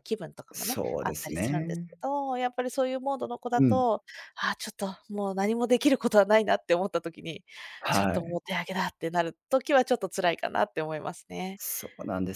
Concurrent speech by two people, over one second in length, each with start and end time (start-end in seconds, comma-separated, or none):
0.5-2.0